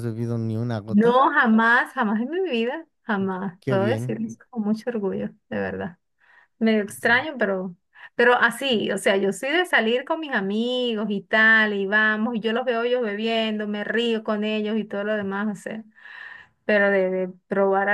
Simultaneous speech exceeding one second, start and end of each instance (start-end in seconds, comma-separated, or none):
none